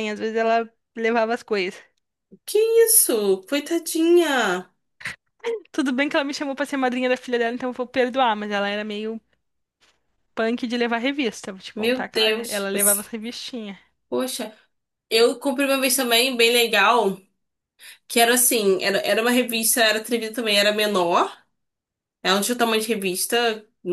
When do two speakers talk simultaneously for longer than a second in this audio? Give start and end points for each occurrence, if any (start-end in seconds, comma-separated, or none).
11.8-13.0